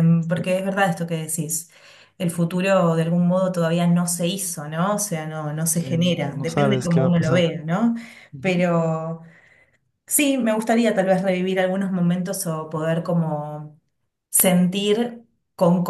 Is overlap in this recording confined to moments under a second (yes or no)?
no